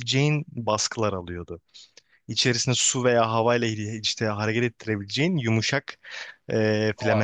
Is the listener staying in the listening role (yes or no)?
yes